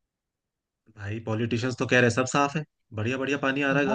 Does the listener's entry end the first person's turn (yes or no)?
yes